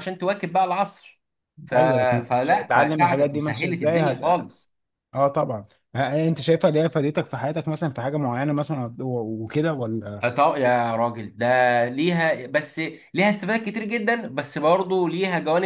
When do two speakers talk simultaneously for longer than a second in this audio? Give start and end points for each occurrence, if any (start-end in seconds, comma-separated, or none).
2.3-4.2